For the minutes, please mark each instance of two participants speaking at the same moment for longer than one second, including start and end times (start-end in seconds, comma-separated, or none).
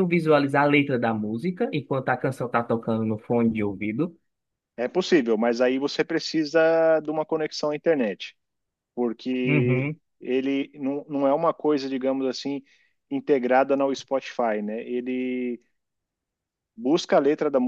none